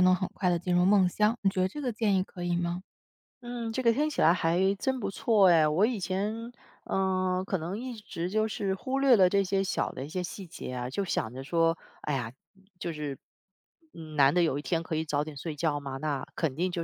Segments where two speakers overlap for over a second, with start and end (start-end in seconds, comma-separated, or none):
none